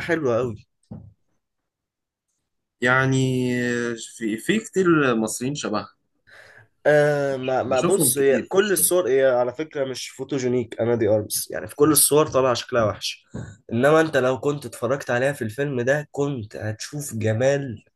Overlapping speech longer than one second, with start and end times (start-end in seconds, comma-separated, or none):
7.7-8.9